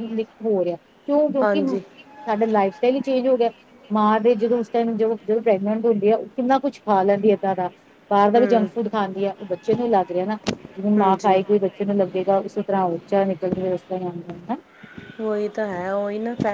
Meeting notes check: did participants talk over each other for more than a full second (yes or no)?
no